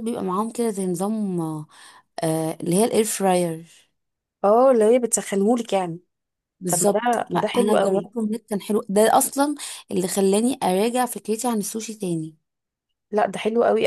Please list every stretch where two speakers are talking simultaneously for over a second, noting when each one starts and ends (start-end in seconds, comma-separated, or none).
6.7-8.1